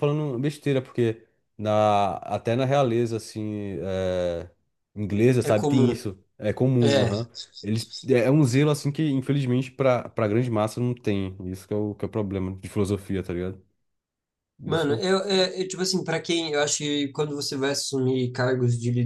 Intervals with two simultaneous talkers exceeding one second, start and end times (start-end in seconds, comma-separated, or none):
none